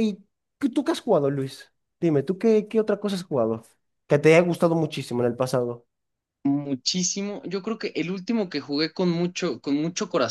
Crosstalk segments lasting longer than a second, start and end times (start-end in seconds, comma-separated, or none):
none